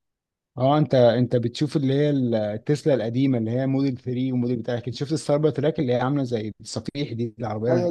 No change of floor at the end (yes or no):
no